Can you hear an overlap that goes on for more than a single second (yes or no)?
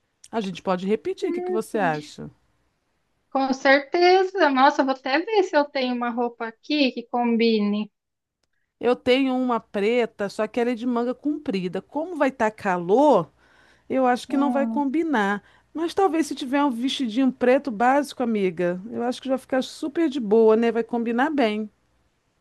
no